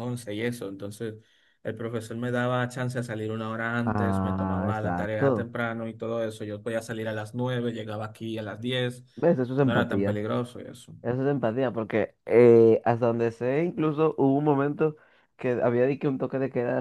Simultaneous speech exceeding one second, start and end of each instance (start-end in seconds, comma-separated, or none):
3.8-5.5